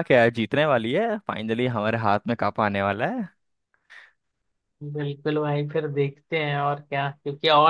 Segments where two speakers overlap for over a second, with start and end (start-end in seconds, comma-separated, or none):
none